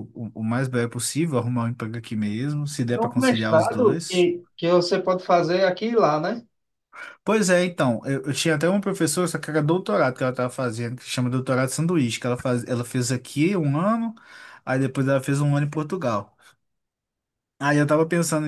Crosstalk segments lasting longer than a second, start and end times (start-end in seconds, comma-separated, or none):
2.9-4.3